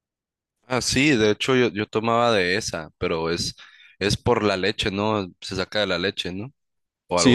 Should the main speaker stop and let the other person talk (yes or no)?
yes